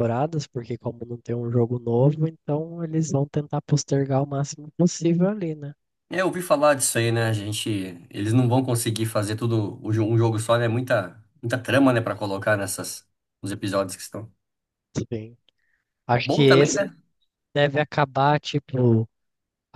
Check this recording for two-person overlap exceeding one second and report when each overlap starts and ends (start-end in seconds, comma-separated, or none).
none